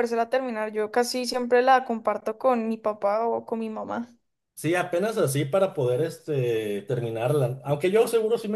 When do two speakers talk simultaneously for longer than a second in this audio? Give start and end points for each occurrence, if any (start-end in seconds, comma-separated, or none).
none